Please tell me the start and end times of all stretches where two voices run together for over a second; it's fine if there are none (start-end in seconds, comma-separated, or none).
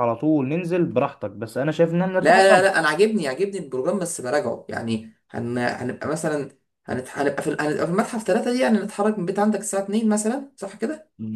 none